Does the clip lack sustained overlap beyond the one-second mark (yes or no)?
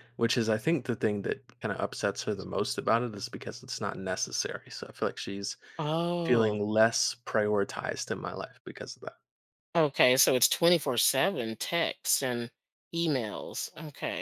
yes